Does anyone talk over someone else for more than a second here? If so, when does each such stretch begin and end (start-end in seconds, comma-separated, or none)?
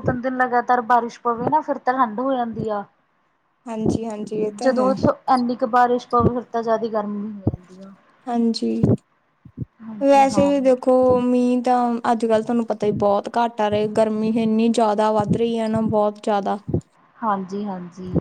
none